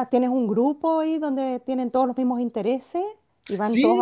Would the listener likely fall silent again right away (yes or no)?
no